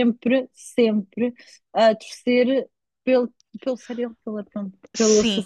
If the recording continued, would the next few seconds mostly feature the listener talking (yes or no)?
no